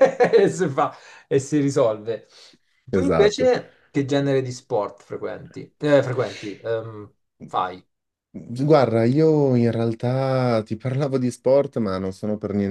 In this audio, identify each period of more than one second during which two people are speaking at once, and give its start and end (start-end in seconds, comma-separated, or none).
none